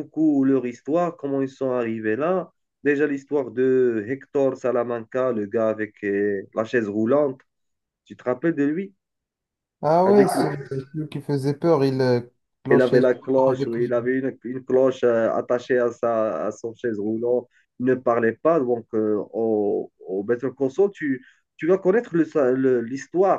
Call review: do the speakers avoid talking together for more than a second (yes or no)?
no